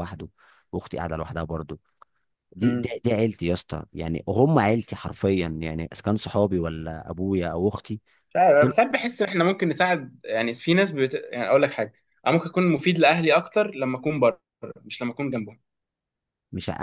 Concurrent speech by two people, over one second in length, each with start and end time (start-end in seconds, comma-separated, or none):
none